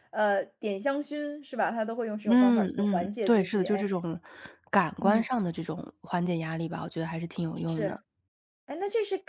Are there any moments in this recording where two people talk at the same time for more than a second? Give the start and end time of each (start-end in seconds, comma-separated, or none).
2.3-3.9